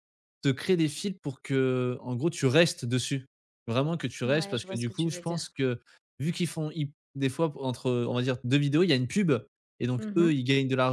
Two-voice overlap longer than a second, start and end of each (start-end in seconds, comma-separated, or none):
4.2-5.5